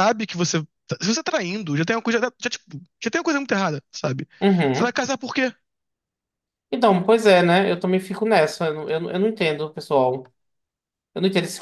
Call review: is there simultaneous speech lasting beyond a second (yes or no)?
no